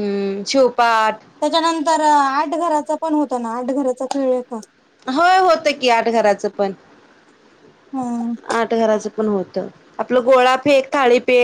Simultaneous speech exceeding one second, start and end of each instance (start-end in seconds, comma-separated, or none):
none